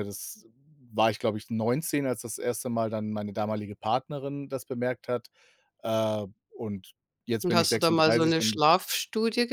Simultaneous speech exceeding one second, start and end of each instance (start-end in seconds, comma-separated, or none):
7.4-8.6